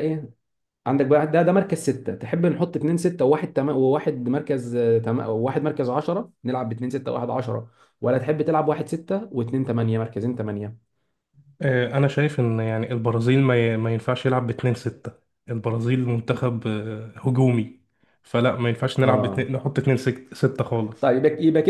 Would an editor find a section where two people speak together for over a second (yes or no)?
no